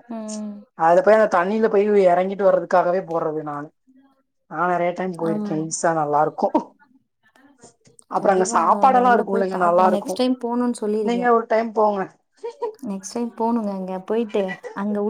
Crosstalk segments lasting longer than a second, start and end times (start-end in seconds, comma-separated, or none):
8.2-10.1